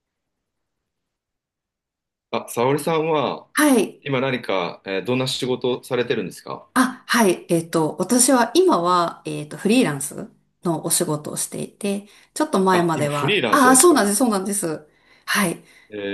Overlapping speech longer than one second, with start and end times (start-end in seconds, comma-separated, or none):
12.7-14.0